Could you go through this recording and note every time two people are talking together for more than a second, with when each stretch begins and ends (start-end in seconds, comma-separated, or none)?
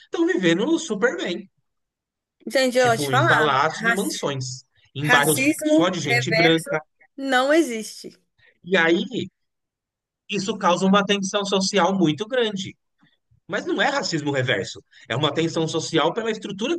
2.8-4.2, 5.0-6.7